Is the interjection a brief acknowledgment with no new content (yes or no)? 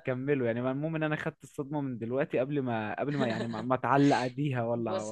no